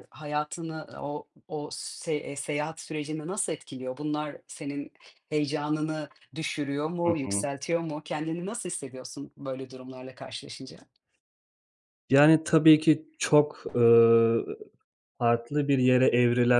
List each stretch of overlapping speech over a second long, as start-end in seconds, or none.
none